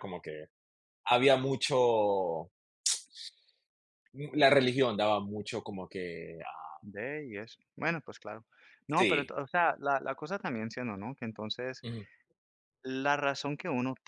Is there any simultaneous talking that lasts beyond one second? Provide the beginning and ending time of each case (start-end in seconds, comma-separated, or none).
none